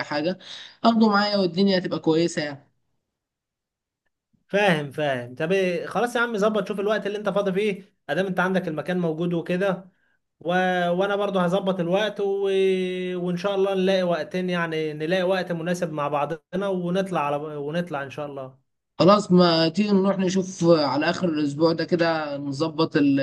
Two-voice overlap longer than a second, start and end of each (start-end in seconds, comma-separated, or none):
none